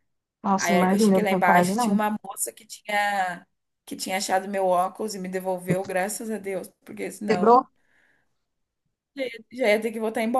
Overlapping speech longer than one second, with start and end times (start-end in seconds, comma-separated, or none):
0.6-2.0